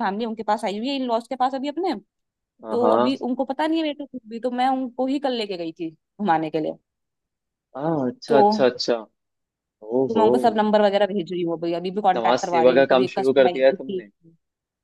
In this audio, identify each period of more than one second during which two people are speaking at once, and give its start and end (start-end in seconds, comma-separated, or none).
12.2-13.7